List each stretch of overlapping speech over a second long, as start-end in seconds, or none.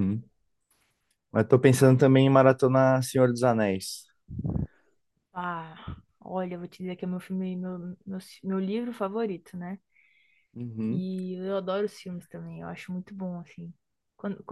none